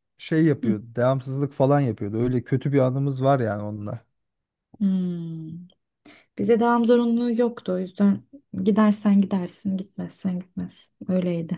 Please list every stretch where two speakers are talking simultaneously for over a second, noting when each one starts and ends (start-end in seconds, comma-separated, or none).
none